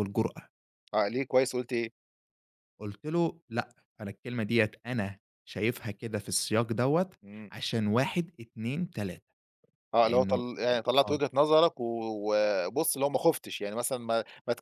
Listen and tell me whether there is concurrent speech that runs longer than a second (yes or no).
no